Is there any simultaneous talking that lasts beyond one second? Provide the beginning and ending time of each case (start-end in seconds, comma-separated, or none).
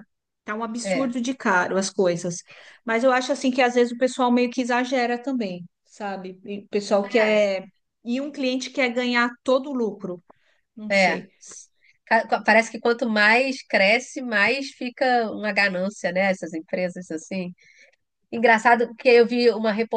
none